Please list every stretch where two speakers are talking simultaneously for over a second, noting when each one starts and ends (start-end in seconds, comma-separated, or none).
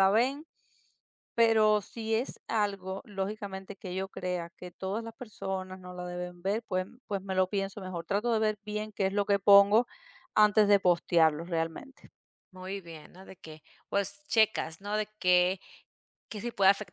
none